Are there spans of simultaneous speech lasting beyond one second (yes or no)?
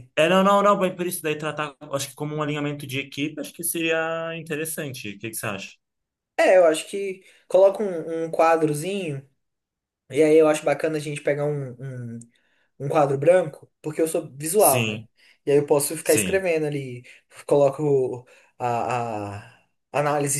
no